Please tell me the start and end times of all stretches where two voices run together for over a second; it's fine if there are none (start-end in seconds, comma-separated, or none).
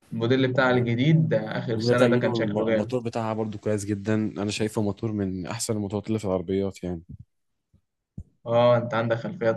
1.8-3.0